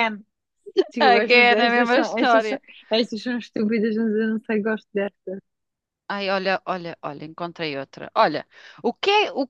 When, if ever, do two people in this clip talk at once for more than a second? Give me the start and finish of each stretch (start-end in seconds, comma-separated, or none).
1.0-2.6